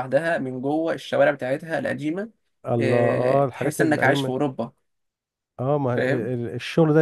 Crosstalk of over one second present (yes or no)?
yes